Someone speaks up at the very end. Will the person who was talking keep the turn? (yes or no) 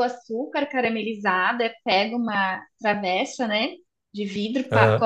yes